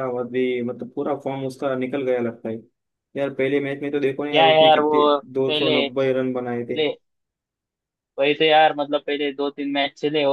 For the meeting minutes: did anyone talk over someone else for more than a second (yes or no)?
yes